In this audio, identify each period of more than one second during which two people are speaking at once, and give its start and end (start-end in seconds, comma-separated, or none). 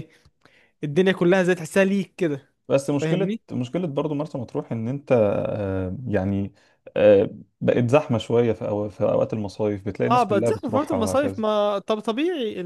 10.1-11.4